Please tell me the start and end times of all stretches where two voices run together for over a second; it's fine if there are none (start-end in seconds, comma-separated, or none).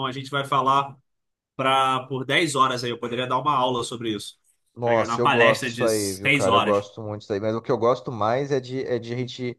4.8-6.8